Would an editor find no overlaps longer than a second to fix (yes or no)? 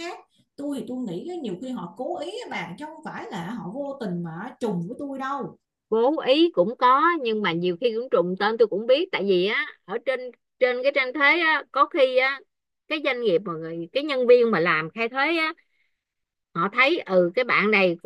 yes